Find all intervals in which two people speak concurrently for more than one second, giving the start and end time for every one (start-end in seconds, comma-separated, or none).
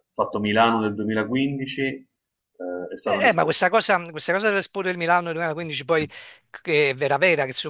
none